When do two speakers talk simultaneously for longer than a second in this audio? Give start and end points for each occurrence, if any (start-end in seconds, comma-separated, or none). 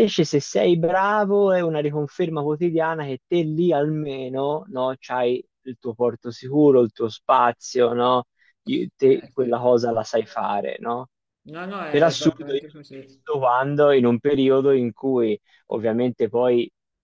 11.9-13.2